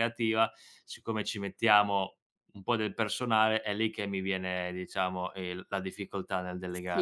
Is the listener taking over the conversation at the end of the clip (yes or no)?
yes